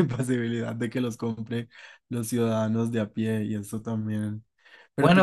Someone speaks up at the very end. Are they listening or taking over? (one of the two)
taking over